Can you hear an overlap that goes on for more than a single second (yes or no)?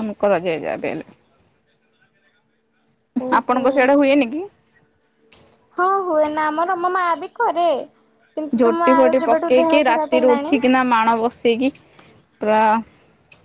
yes